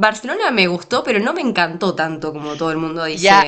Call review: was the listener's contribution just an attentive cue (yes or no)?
no